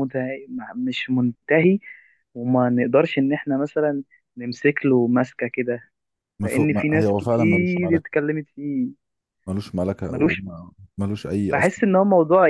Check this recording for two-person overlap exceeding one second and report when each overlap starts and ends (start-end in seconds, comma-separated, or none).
6.4-8.1